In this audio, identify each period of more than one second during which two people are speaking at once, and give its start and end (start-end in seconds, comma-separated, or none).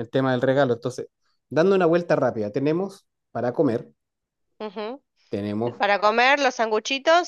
none